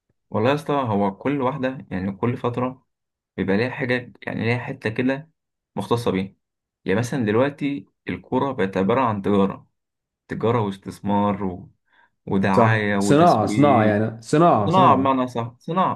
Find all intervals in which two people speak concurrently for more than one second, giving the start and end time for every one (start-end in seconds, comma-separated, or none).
12.5-14.0